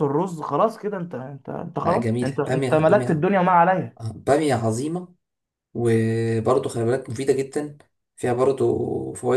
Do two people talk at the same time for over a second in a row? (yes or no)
yes